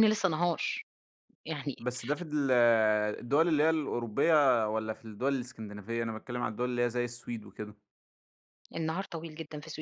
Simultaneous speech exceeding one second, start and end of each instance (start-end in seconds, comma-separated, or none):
none